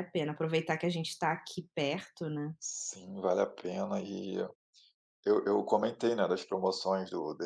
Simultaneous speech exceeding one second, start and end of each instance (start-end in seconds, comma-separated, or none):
none